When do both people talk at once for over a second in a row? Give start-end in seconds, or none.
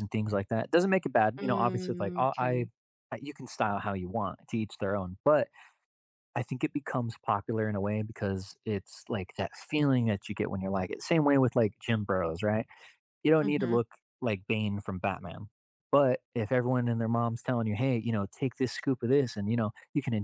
1.4-2.7